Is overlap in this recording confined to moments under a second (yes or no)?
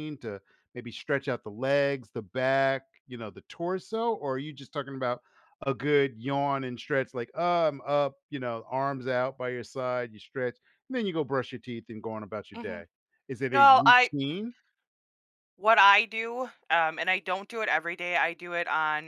yes